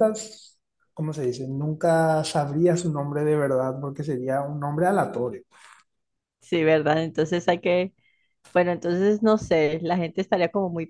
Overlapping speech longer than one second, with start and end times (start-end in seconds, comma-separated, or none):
none